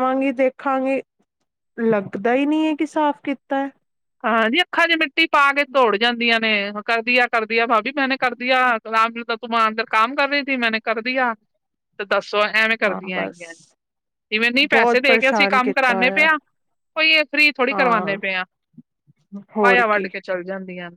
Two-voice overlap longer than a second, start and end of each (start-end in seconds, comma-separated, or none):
14.7-16.3